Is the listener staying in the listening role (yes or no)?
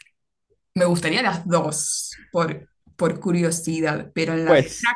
no